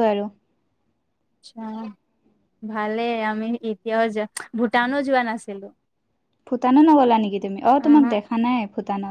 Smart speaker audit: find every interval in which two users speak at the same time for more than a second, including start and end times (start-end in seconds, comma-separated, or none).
none